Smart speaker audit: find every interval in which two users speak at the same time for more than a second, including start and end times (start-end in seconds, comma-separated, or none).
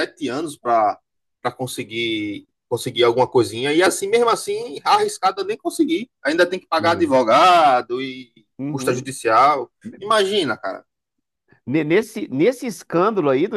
none